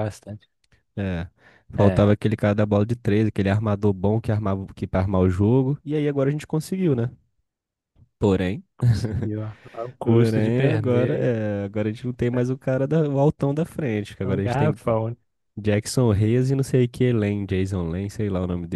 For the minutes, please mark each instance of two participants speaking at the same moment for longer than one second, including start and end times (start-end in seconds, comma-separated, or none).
10.0-11.3